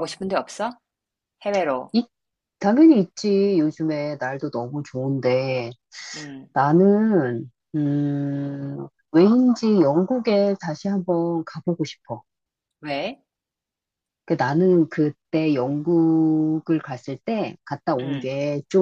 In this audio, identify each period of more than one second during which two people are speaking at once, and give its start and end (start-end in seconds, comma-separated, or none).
none